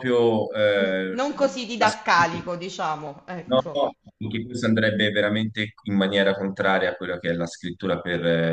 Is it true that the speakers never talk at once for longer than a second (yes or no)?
yes